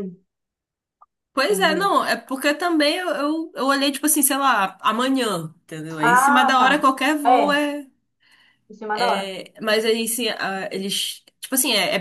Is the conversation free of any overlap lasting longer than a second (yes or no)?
no